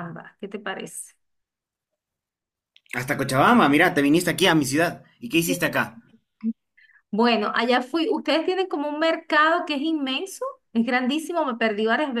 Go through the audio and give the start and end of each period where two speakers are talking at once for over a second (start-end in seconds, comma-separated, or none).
none